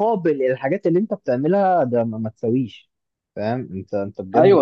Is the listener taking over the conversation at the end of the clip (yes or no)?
yes